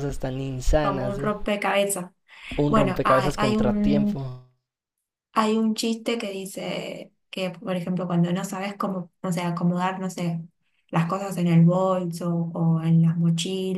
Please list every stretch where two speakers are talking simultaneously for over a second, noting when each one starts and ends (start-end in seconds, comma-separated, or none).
2.7-4.2